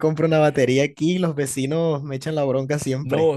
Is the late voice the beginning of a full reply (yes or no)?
yes